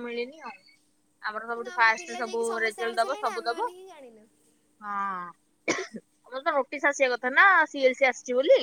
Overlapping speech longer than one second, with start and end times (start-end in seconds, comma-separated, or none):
1.5-3.7